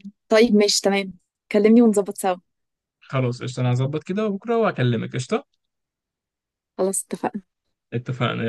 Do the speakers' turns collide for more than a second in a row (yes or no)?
no